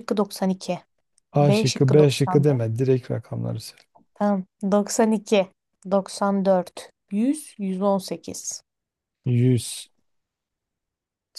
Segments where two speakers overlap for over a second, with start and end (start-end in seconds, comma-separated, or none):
1.4-2.6